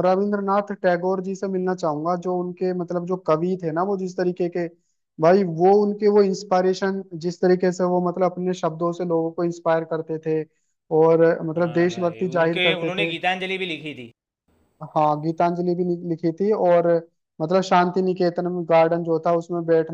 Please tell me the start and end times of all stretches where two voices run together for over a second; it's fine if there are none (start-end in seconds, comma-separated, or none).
11.6-13.1